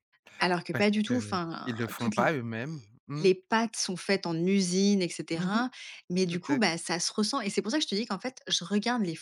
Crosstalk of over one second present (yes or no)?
yes